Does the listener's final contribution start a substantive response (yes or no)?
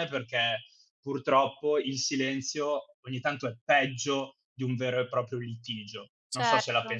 yes